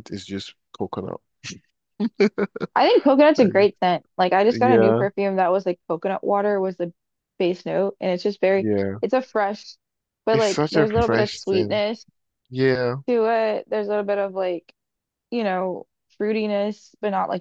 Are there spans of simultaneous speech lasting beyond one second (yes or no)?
yes